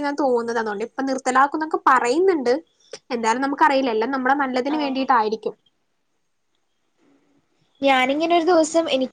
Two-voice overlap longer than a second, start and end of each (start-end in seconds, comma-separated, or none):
none